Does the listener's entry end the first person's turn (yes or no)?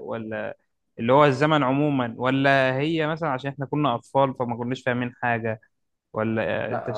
yes